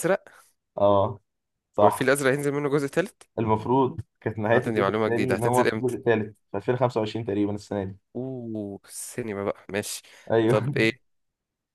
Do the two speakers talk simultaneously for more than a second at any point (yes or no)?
yes